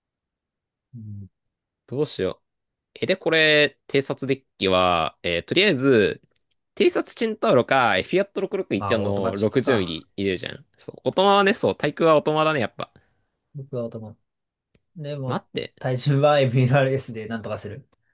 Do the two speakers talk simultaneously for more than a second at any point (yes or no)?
yes